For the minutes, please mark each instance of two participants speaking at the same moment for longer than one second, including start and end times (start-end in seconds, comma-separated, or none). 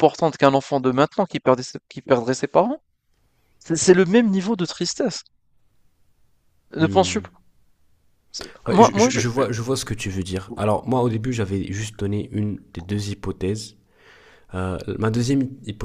none